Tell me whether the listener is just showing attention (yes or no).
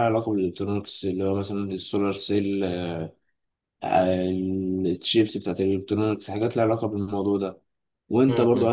yes